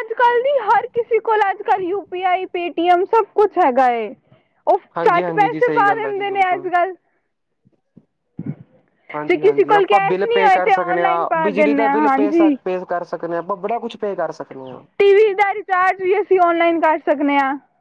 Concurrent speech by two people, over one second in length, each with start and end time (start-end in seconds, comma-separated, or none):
5.0-6.7, 9.3-12.5